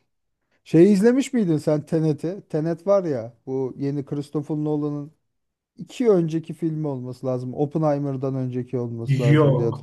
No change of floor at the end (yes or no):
no